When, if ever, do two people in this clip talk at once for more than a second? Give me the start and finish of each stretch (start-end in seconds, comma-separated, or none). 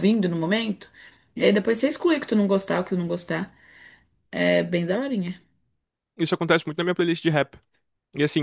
none